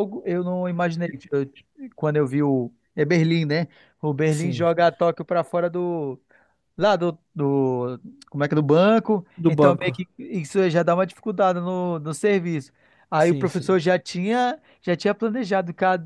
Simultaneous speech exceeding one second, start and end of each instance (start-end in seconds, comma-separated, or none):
none